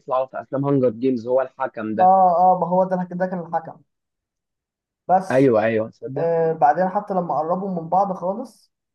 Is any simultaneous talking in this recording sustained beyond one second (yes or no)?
no